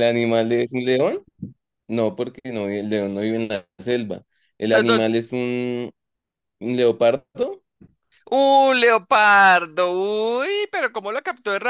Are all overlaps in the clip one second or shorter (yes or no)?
yes